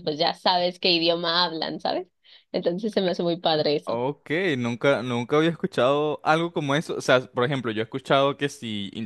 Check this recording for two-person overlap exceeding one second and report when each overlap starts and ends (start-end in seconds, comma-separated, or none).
none